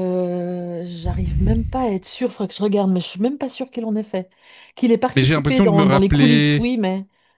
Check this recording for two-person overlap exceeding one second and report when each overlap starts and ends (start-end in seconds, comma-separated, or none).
5.2-6.7